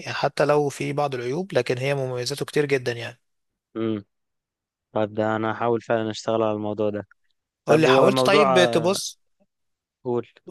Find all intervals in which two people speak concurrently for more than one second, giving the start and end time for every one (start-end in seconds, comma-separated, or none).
7.7-9.0